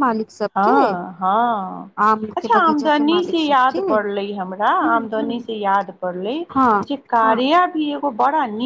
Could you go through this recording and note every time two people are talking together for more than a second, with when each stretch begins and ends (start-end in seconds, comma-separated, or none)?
2.4-3.8